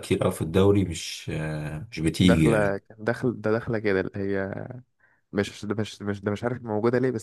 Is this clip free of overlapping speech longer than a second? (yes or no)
yes